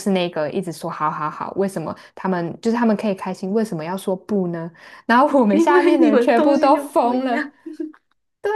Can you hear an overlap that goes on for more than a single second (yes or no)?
yes